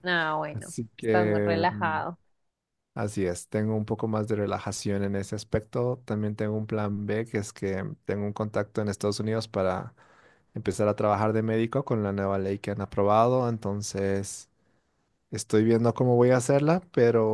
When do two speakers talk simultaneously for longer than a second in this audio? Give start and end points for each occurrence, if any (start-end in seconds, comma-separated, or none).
0.5-2.0